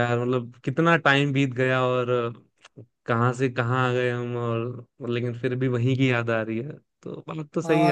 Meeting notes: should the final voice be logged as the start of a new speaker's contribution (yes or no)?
yes